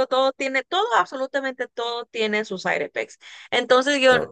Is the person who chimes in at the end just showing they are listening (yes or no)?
yes